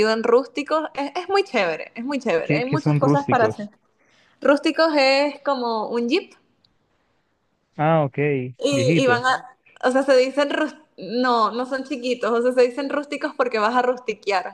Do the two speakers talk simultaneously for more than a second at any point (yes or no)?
yes